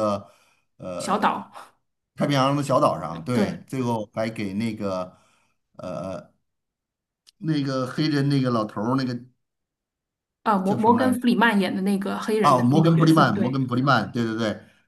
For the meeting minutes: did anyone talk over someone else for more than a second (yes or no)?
yes